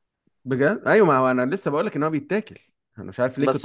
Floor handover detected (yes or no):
yes